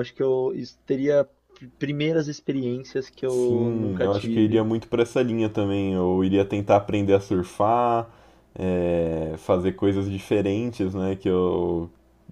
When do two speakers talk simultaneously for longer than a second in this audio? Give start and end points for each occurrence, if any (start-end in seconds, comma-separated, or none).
3.3-4.7